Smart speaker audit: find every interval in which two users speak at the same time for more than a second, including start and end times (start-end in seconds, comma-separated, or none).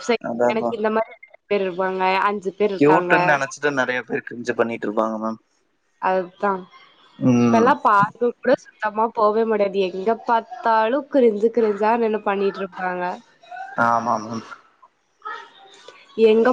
none